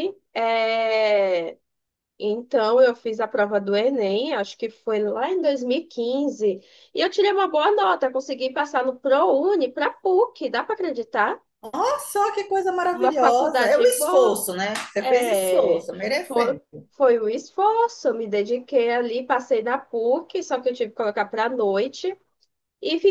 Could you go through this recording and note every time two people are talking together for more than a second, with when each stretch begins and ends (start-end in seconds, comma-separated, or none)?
12.9-14.4, 15.0-16.6